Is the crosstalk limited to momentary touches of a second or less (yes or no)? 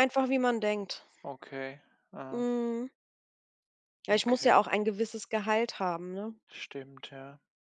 yes